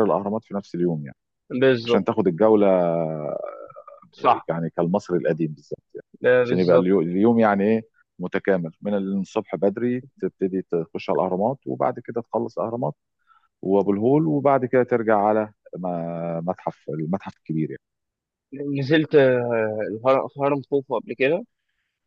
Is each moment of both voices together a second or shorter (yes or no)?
yes